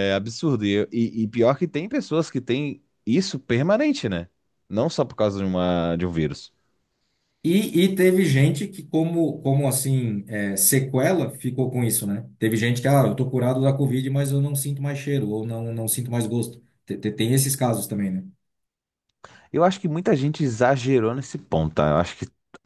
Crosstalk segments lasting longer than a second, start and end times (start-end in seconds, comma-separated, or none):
none